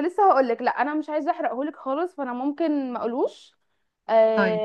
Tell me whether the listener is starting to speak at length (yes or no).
no